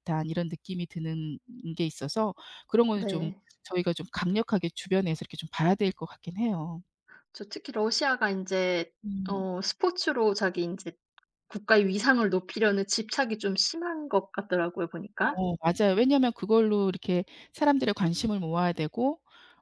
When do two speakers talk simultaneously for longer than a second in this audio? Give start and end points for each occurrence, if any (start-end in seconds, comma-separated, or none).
none